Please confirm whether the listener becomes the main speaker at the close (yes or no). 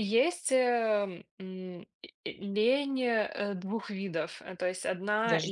no